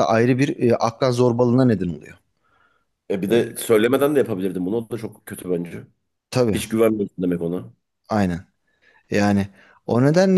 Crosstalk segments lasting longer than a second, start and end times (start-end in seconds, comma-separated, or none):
none